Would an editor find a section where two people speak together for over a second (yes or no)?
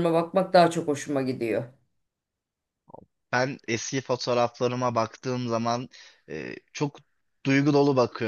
no